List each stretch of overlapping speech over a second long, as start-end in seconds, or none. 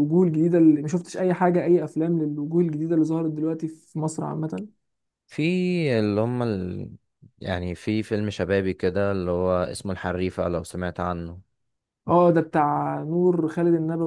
none